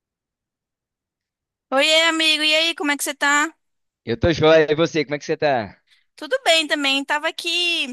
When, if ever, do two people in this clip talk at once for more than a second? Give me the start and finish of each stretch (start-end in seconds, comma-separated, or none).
none